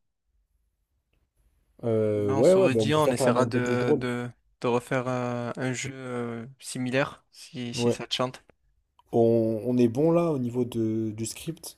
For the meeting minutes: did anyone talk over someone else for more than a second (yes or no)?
yes